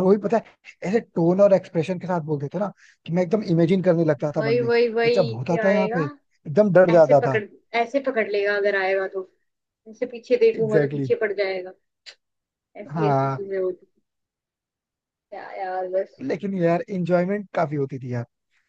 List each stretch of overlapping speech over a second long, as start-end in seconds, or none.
4.4-6.0